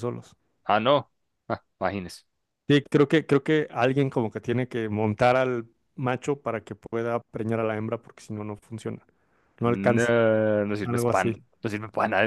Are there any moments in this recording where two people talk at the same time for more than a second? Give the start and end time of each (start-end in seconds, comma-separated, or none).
none